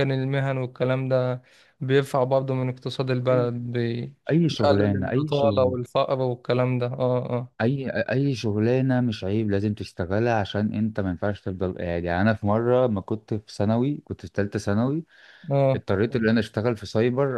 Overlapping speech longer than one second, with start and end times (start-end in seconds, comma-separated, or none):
4.5-5.8